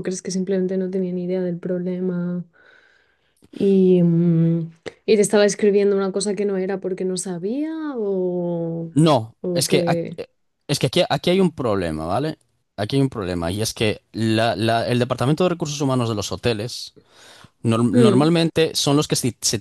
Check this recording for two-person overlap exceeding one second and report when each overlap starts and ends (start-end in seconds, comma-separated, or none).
none